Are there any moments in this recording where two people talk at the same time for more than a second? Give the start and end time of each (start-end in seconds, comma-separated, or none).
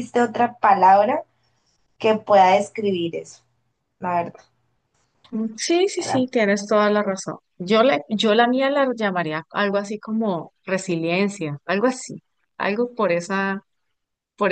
none